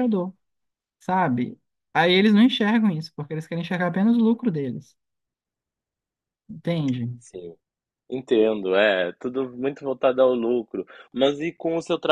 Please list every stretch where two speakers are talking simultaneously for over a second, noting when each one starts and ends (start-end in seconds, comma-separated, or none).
none